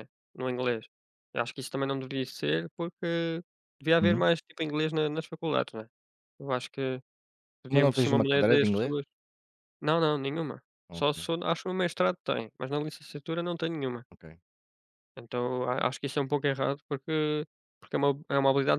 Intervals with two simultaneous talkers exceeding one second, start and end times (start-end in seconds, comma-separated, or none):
7.7-8.9